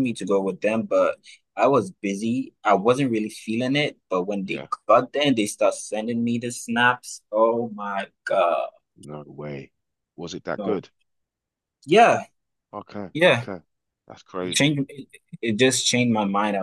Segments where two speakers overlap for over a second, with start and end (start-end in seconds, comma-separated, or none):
none